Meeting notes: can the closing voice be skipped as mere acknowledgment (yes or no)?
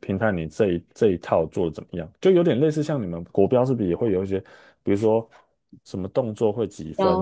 yes